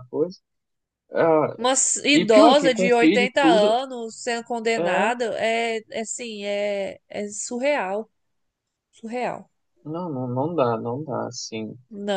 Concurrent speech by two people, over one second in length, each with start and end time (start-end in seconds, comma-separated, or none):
2.1-3.8